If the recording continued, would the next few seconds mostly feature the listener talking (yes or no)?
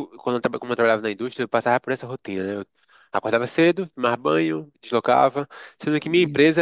no